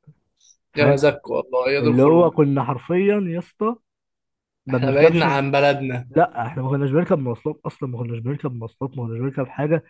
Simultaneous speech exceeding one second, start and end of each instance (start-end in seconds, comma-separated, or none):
none